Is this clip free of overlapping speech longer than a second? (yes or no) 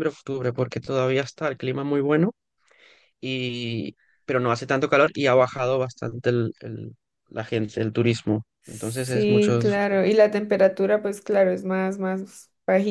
no